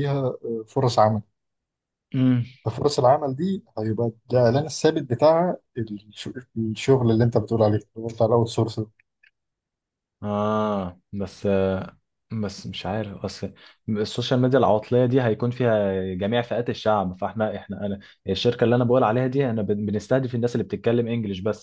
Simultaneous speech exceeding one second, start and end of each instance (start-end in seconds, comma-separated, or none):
none